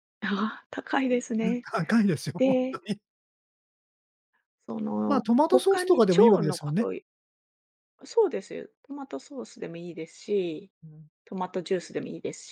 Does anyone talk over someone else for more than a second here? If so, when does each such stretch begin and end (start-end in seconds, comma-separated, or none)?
5.0-6.9